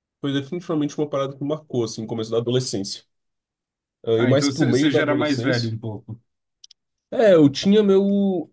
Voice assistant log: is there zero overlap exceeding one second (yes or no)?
no